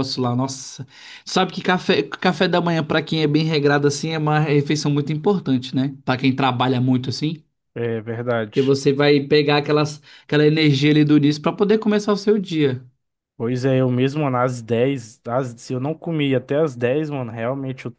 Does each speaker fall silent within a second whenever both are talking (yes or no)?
yes